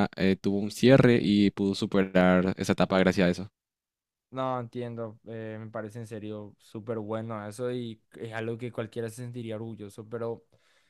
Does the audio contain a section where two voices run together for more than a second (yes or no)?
no